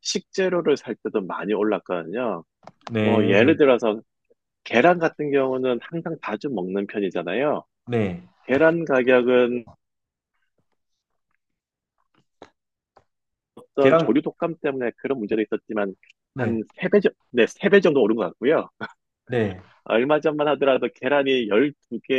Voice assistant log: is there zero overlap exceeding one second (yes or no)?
yes